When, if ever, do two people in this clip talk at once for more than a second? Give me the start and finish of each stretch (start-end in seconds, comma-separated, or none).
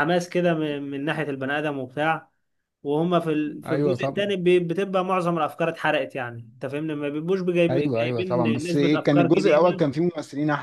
7.7-9.8